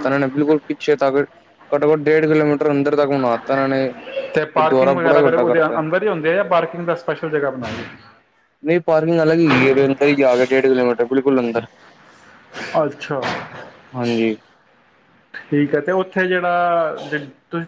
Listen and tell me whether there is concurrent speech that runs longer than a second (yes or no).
yes